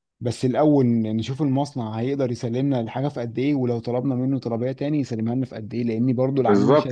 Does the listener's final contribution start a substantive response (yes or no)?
yes